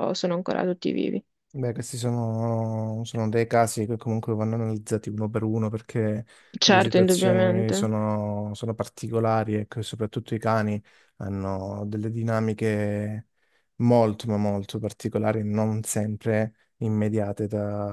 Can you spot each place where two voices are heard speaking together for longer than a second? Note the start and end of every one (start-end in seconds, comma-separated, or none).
6.6-7.9